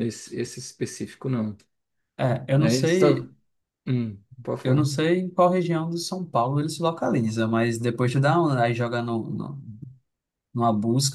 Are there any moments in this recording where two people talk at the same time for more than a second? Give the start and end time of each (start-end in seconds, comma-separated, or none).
none